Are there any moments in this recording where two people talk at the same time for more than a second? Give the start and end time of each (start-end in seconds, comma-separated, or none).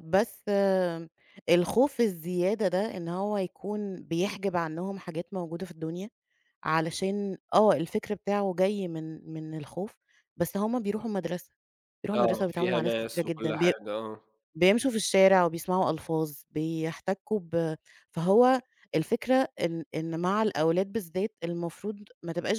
12.2-13.7